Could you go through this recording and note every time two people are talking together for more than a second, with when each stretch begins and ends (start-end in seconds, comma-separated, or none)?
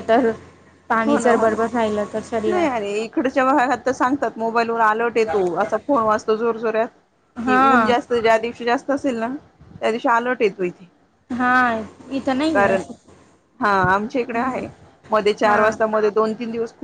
none